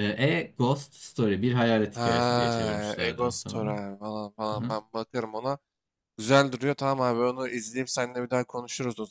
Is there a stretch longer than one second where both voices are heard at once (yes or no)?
yes